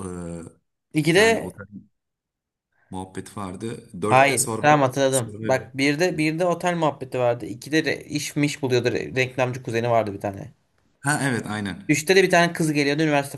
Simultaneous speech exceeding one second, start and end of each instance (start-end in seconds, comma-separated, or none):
4.1-5.6